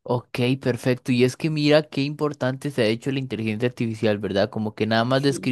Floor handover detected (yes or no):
no